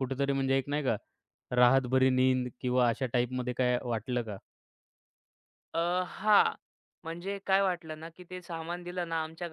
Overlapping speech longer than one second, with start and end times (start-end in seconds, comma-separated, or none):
none